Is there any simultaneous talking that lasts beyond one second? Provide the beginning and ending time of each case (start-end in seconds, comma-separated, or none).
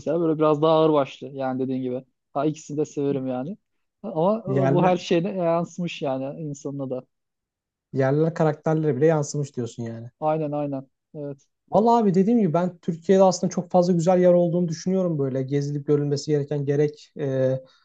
none